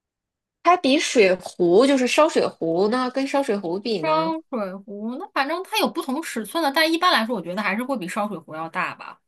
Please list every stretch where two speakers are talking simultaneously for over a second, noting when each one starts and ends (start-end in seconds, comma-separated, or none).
none